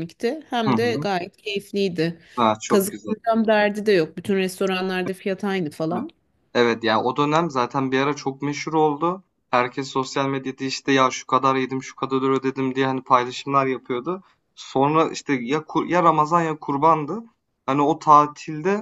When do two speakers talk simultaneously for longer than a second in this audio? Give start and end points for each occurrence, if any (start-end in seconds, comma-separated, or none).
none